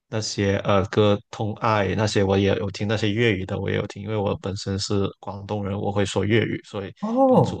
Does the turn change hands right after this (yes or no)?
yes